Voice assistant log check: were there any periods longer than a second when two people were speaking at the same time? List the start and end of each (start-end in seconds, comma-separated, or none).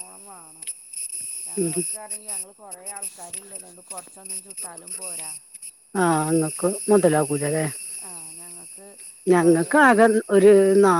none